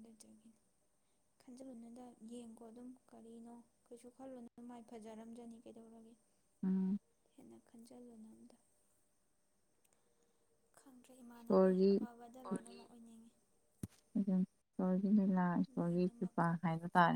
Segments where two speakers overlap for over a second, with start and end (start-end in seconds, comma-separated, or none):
none